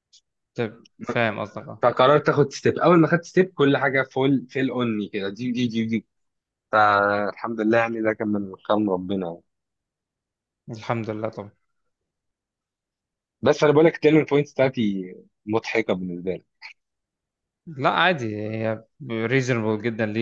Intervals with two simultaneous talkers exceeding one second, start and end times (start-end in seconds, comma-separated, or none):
none